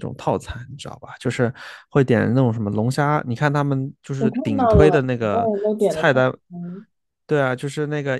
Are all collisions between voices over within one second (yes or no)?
no